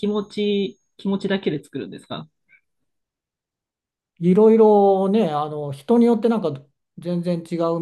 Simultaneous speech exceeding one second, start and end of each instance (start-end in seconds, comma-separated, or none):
none